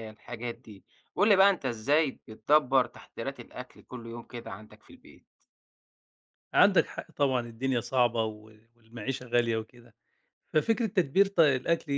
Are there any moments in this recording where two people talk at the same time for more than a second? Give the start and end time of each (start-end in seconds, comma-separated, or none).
none